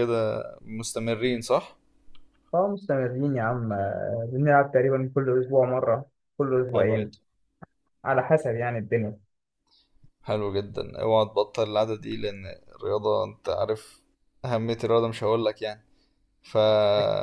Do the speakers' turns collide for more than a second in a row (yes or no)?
no